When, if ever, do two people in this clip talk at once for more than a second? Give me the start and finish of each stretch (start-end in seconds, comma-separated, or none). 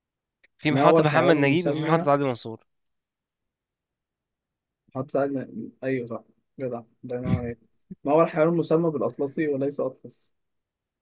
0.7-2.1